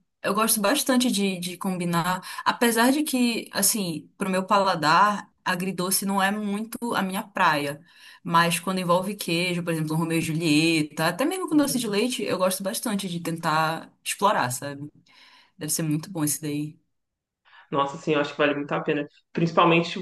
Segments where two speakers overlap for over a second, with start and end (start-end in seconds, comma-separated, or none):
none